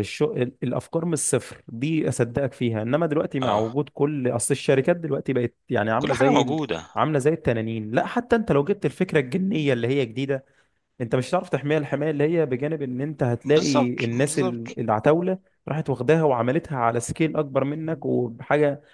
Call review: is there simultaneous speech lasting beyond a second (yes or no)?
yes